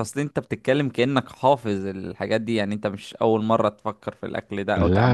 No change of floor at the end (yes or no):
no